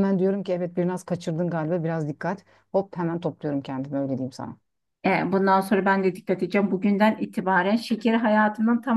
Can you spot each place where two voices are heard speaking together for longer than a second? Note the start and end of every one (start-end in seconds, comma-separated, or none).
none